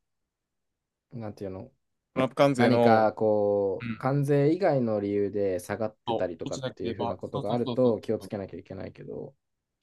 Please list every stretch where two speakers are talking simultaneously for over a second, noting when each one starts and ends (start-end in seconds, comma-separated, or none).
6.1-8.3